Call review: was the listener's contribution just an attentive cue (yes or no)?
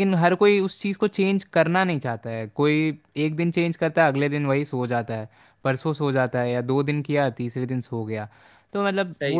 yes